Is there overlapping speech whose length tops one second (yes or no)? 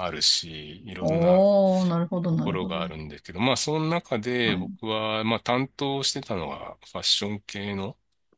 no